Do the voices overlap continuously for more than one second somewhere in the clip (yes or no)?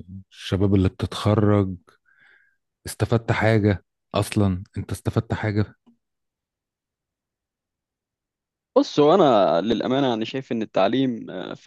no